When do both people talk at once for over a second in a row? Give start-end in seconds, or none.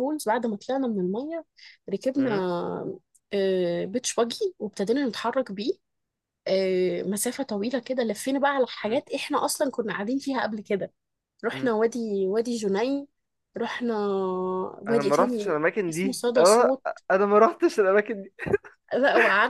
14.9-16.7